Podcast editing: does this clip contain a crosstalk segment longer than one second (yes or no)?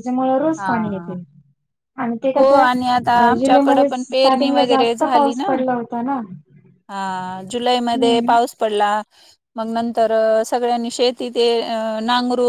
yes